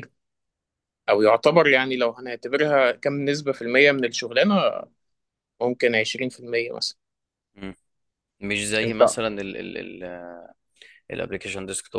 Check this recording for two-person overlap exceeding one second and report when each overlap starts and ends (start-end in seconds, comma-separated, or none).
none